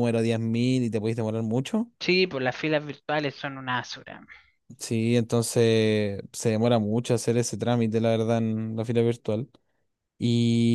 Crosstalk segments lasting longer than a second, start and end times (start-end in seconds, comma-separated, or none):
none